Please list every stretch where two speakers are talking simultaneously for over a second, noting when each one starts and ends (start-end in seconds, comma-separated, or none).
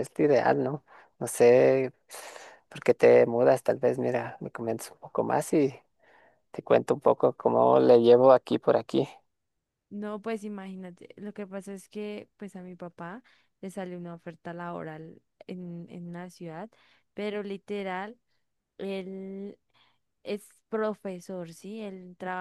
none